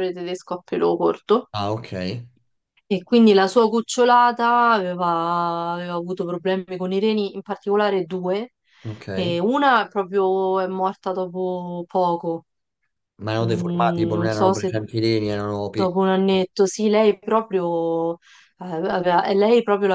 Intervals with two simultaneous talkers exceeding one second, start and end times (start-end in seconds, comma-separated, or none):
13.4-14.7